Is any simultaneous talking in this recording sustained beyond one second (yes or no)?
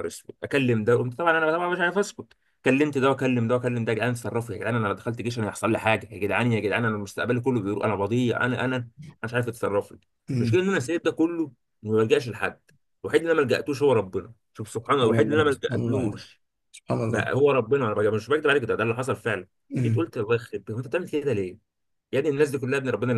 yes